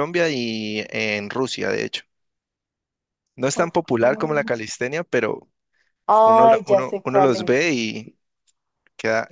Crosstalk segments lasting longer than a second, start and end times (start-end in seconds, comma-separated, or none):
6.2-7.6